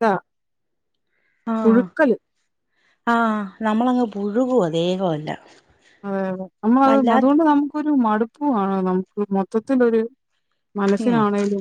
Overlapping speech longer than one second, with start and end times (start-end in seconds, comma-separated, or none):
none